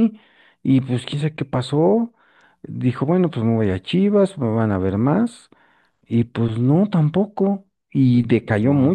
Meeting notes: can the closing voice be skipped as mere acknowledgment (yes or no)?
yes